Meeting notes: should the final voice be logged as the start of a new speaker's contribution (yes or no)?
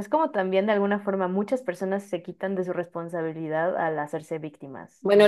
yes